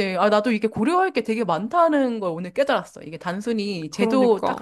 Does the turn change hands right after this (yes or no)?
no